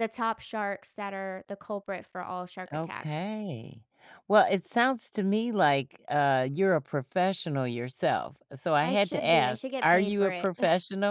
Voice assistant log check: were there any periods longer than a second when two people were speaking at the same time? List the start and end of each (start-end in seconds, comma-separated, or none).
8.8-10.5